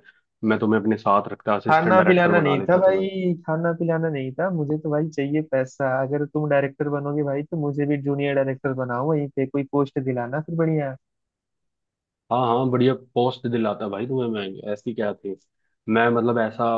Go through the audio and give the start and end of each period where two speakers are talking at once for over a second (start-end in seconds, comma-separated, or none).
1.7-3.1